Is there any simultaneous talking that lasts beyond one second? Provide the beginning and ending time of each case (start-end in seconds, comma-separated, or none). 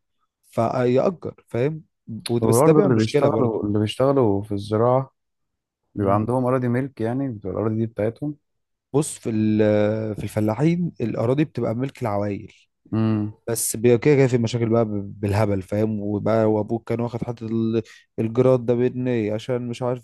2.4-3.6